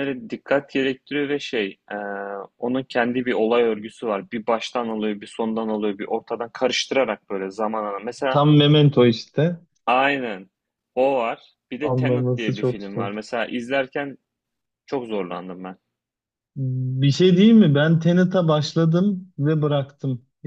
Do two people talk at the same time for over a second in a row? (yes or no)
yes